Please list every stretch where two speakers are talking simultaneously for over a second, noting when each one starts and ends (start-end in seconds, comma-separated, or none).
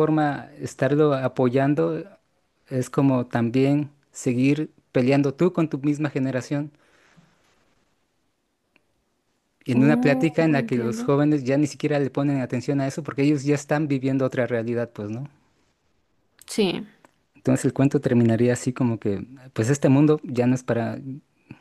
9.7-11.1